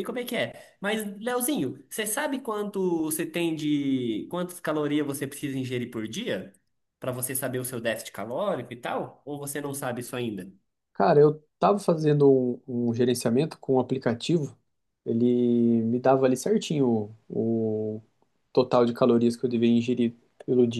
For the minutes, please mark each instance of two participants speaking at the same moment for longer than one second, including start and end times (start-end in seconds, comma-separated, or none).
none